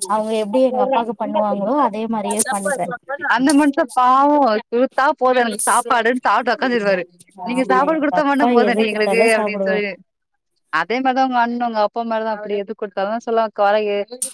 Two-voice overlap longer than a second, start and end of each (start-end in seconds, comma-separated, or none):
7.6-9.8